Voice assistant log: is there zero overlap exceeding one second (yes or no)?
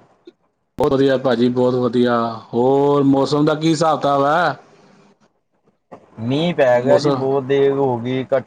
yes